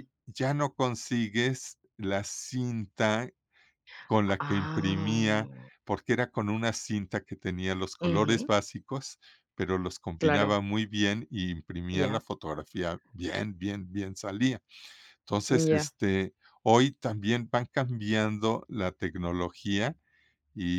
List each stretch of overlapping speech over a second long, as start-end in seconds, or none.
4.2-5.7